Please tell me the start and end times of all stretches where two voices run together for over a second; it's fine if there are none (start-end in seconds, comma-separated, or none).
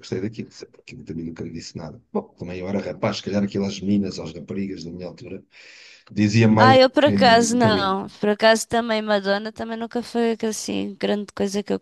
6.6-8.0